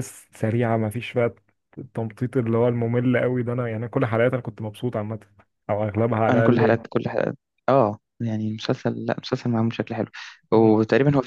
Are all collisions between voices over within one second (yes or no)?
yes